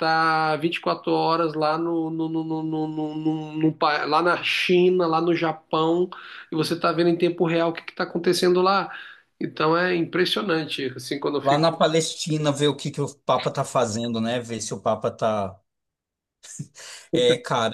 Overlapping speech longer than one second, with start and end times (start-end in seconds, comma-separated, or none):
none